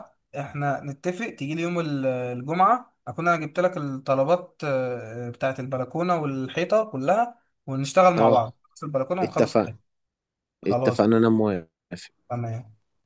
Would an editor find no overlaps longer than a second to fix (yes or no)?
yes